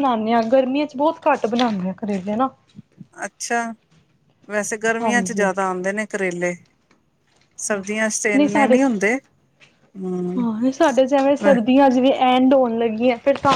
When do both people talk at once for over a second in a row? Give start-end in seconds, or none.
none